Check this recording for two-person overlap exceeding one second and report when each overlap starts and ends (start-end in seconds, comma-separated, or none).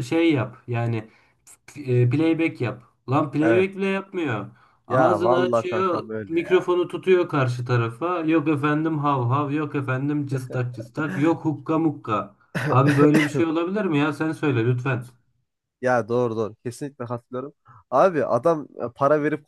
4.9-6.7